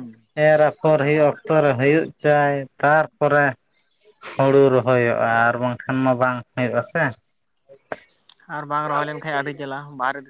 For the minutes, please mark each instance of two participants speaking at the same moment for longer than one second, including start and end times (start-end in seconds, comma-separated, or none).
none